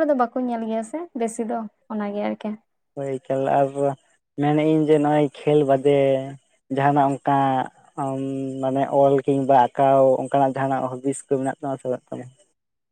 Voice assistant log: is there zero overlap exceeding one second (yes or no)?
yes